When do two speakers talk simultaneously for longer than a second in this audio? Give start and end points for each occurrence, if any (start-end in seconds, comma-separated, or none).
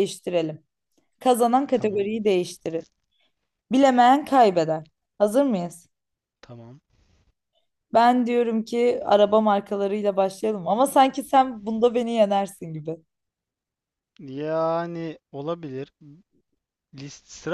none